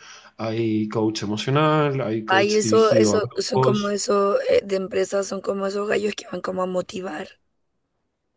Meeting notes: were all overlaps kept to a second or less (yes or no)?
no